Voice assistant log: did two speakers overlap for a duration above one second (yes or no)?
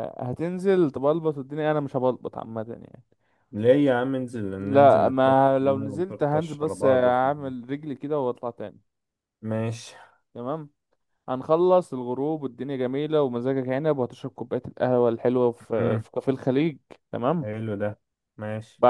yes